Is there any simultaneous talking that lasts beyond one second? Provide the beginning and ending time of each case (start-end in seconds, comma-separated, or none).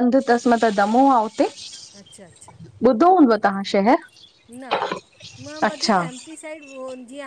none